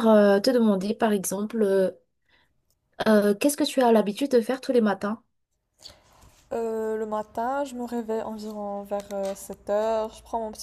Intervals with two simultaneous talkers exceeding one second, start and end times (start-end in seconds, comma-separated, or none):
none